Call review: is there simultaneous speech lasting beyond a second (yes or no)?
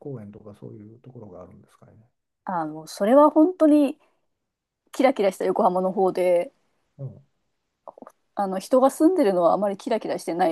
no